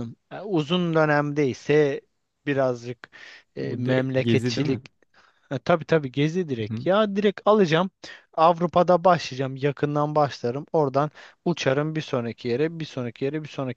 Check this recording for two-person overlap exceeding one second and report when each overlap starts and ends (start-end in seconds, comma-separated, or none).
3.6-4.8